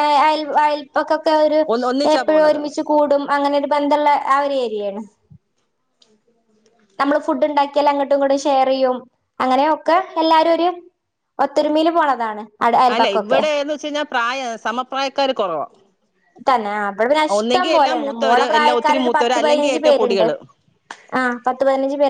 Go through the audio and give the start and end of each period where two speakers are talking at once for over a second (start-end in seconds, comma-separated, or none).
17.4-20.3